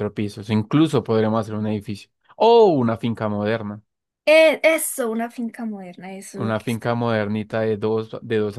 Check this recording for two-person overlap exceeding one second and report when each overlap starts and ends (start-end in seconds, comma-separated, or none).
none